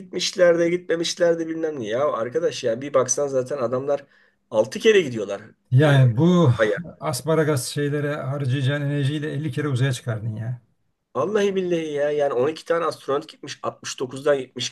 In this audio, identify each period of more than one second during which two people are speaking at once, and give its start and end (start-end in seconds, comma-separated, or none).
none